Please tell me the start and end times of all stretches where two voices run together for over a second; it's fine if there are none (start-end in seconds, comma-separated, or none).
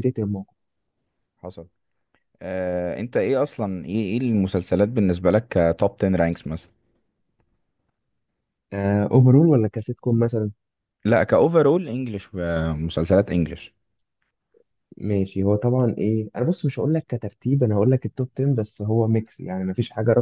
none